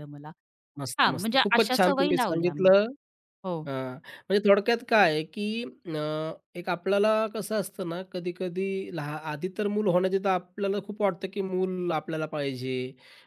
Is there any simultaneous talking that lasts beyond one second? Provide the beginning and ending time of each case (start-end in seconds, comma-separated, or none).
1.0-2.7